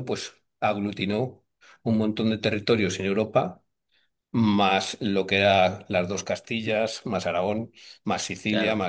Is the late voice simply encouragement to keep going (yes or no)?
no